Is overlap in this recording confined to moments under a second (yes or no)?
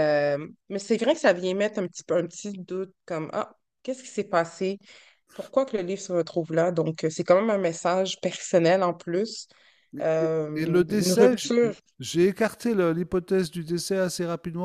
no